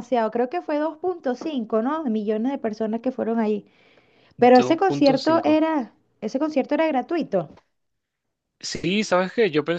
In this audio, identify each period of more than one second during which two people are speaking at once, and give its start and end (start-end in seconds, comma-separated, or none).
4.4-5.6